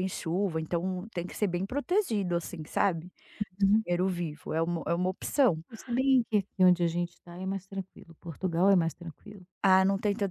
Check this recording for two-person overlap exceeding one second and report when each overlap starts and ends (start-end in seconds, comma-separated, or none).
none